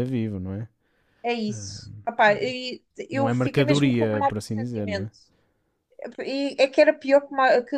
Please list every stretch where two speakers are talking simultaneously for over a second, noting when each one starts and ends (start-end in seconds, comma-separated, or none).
3.1-5.1